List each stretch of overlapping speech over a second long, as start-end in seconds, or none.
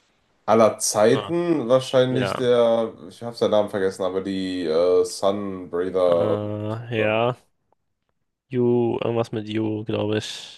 none